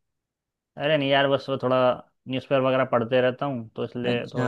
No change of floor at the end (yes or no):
yes